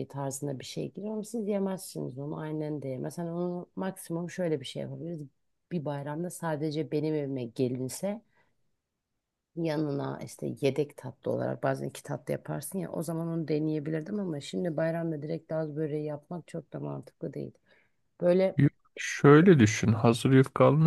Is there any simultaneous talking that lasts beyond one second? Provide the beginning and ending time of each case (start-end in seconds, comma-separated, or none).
none